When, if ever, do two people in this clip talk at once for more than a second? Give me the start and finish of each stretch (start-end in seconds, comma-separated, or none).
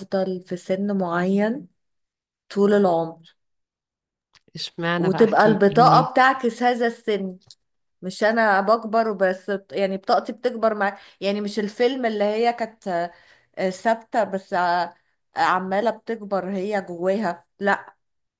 5.0-6.2